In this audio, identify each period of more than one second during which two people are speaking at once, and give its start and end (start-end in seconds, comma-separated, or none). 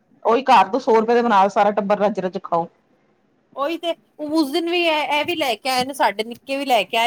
none